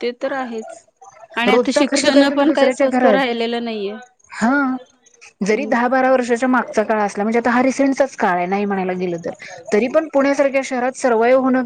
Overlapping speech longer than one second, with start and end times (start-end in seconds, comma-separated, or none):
1.5-3.2